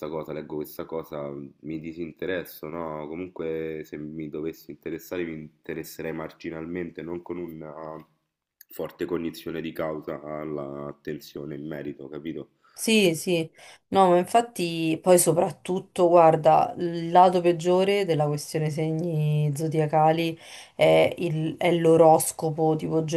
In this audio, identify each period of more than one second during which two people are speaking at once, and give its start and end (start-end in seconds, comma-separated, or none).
none